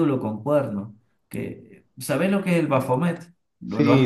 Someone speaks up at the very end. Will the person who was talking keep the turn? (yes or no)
no